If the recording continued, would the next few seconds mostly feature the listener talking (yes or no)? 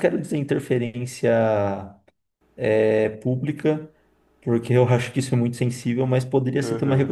no